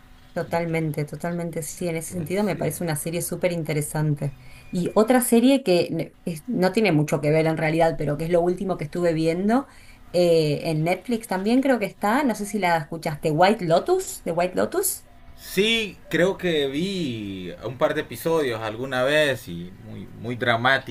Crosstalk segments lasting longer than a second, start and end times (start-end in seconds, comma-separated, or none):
none